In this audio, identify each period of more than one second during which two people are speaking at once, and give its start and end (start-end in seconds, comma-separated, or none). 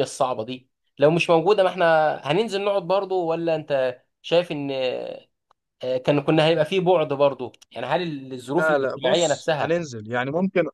8.6-9.8